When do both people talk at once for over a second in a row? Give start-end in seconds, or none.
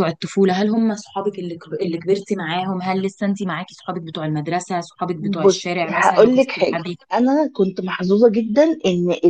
5.1-7.0